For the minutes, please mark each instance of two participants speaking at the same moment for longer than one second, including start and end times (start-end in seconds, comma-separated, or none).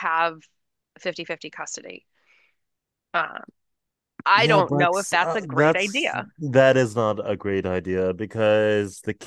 4.3-6.3